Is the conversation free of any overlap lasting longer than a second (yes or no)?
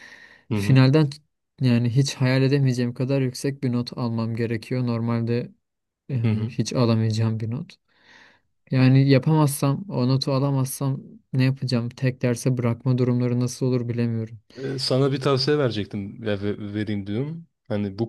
yes